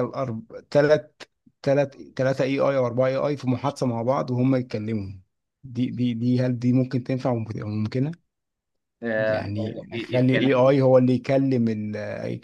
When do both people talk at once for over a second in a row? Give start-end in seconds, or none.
9.3-10.7